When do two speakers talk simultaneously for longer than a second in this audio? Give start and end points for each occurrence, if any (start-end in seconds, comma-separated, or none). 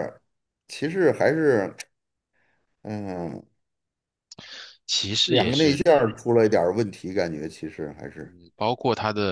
none